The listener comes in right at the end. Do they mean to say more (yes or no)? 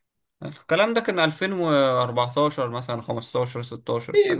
yes